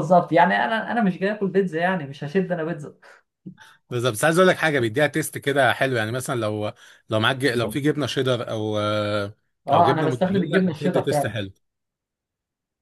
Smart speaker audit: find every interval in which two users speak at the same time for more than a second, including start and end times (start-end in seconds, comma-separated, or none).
9.7-11.4